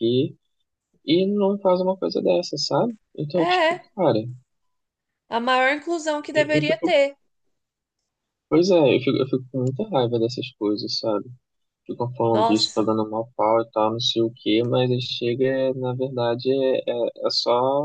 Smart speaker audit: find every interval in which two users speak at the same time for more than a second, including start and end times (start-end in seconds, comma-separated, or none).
none